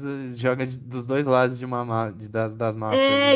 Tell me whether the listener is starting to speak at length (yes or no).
yes